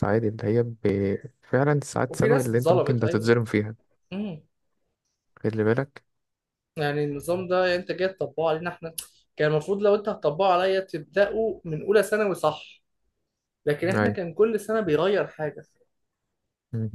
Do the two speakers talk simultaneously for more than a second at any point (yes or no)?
yes